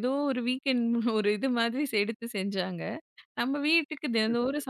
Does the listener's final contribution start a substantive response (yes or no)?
no